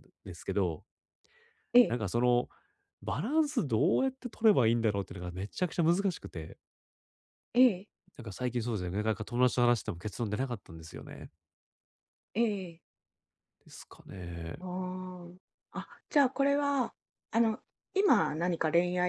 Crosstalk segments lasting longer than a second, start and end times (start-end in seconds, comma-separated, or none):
none